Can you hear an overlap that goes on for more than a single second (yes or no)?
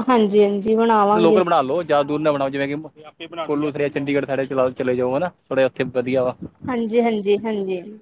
no